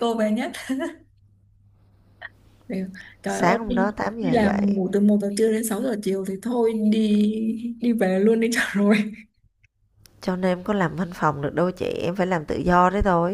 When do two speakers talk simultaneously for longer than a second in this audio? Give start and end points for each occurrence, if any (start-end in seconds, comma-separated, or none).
3.3-4.7